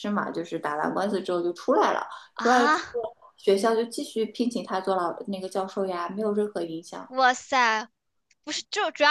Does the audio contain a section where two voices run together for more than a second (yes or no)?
no